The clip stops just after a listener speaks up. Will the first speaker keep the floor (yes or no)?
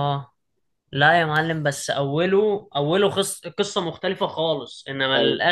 yes